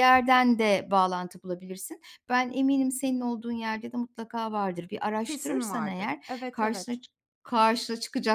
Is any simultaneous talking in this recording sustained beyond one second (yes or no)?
yes